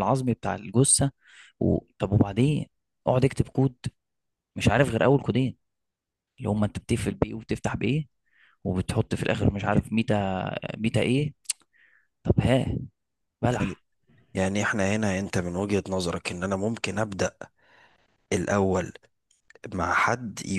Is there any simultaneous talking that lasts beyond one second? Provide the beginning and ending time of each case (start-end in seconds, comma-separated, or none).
none